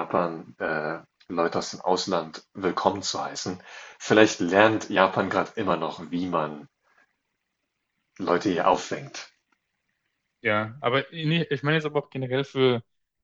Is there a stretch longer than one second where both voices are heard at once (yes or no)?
no